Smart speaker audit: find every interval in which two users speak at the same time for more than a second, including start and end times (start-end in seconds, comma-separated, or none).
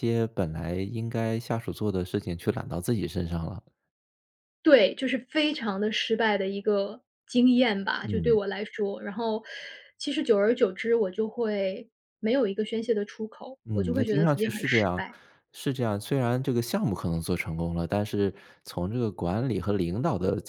13.7-15.0